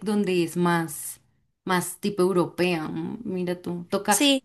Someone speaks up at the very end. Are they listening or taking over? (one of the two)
listening